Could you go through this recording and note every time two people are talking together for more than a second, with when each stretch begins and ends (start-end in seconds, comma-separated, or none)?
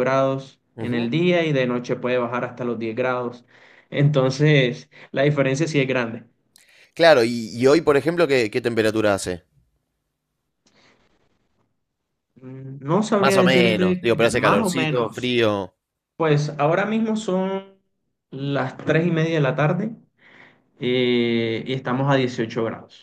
13.2-15.3